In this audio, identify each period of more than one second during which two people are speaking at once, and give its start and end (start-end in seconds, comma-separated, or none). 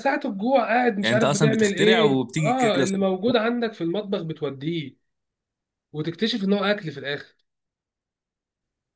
1.0-3.1